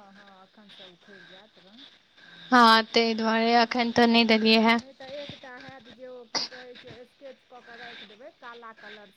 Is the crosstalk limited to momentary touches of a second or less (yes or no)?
yes